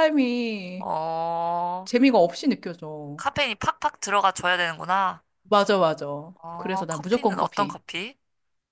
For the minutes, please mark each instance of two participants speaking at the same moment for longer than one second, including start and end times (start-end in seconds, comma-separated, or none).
6.6-7.8